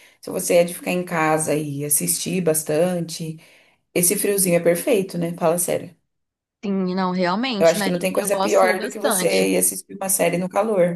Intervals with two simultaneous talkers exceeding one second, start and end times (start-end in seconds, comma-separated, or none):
7.6-9.5